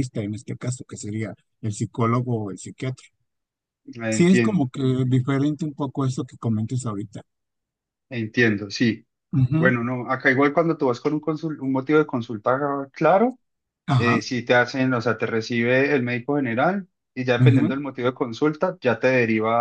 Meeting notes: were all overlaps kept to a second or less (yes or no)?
yes